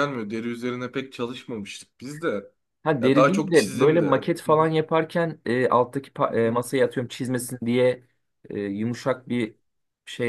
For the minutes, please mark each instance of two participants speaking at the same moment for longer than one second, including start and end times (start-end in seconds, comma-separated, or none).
3.0-4.6